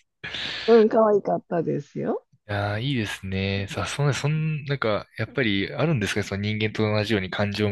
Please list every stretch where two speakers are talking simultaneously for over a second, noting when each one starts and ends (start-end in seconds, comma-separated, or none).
none